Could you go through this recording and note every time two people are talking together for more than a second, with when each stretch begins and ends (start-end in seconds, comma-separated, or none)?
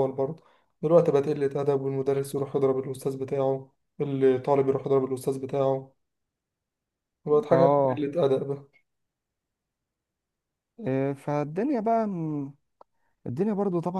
none